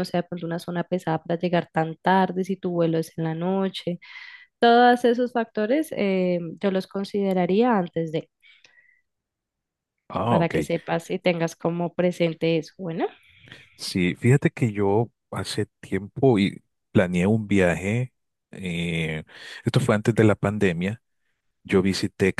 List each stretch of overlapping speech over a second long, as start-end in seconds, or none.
none